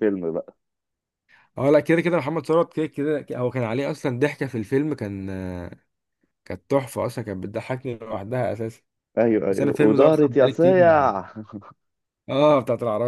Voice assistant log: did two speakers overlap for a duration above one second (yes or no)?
yes